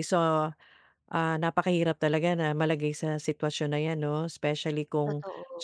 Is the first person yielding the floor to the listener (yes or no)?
no